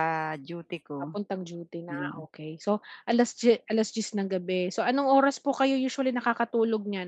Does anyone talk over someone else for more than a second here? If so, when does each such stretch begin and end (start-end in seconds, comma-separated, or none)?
none